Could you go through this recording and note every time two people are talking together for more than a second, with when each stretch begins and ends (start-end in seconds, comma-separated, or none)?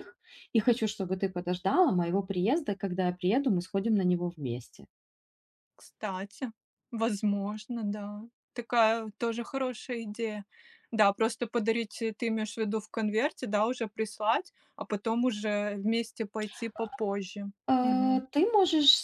none